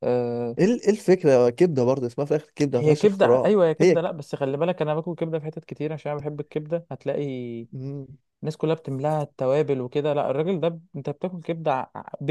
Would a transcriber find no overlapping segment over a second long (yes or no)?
no